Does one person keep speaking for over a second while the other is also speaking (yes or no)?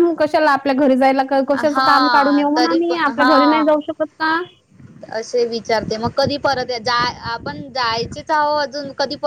yes